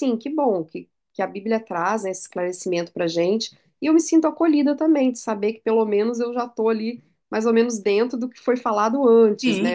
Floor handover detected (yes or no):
yes